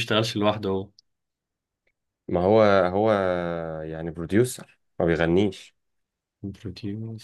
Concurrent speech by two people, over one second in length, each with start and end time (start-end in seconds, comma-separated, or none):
none